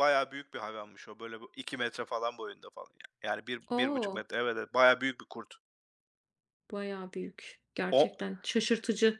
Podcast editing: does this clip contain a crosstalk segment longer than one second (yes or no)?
no